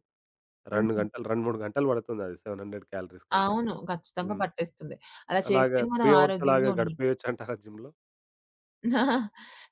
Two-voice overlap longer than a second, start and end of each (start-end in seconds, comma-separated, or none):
5.5-7.1